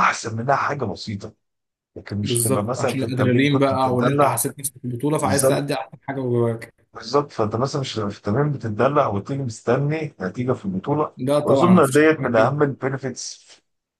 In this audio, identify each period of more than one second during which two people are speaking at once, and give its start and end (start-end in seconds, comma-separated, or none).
2.2-4.5, 11.2-12.6